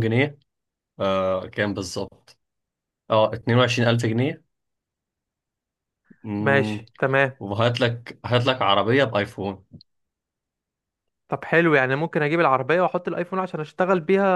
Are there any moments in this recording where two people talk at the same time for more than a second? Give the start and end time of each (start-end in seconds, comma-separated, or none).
none